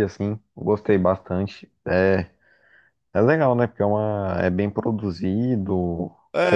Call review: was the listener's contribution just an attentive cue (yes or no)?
no